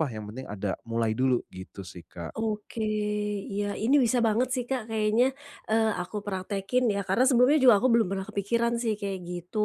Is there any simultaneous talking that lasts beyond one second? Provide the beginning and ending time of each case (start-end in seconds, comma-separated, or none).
none